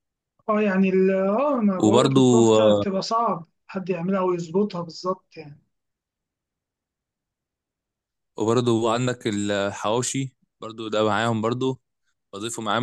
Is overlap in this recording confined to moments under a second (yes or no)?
yes